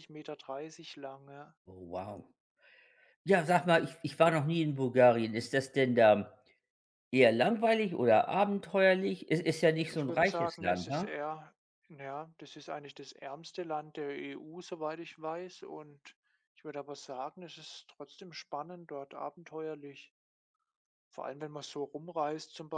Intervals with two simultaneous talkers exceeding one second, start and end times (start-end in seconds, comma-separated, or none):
9.9-11.2